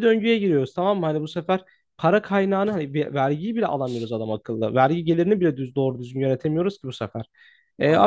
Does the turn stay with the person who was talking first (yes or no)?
yes